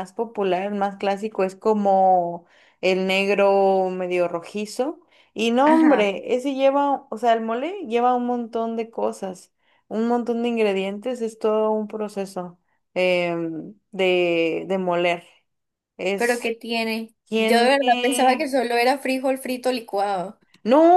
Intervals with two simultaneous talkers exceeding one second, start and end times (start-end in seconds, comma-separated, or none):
17.2-18.5